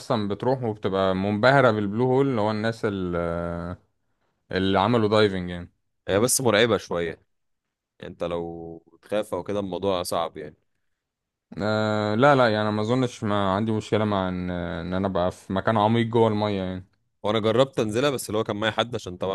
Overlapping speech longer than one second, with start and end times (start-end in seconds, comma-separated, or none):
none